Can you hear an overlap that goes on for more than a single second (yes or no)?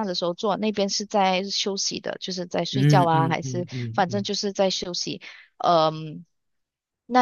yes